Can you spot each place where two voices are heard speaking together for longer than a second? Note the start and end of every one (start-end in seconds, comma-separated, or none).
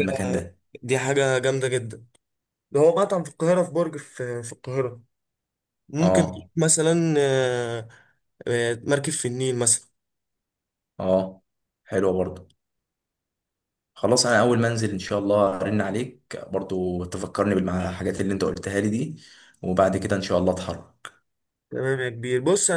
none